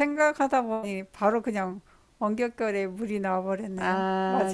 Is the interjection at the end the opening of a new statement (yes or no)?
yes